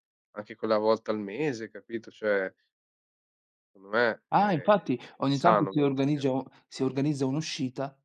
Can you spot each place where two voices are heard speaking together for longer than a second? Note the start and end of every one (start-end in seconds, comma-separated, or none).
4.3-6.3